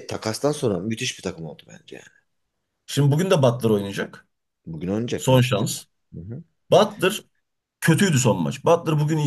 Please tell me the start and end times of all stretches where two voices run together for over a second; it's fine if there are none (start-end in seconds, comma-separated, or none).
none